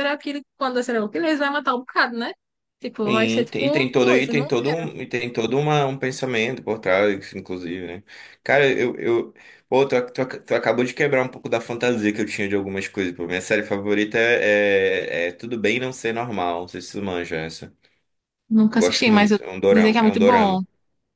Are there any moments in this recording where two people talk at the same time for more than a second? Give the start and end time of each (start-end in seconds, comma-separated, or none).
3.1-4.5, 18.7-20.6